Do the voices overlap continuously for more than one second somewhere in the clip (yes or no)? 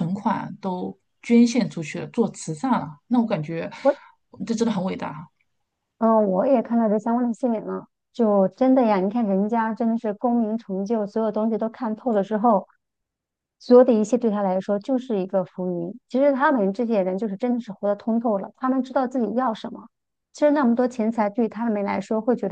no